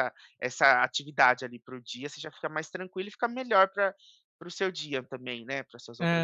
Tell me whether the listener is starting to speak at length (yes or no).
yes